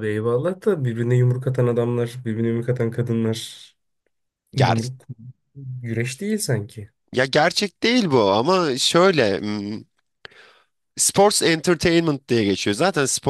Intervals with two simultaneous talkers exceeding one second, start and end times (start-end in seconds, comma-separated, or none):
none